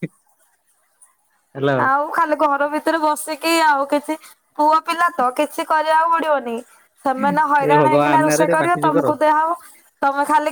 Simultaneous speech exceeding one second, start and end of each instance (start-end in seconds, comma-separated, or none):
7.7-9.1